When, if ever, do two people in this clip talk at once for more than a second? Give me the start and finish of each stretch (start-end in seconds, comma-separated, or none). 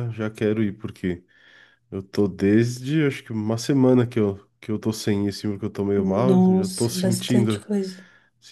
6.0-7.7